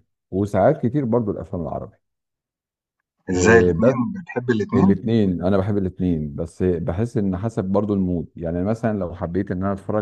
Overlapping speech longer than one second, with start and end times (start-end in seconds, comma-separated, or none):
none